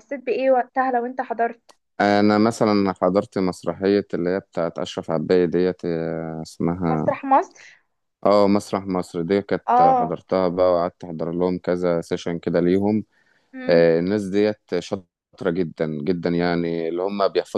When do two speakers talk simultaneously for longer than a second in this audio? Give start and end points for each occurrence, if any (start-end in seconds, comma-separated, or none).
none